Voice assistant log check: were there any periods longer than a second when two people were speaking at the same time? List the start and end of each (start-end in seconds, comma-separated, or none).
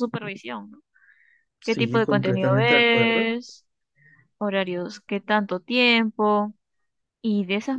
1.6-3.3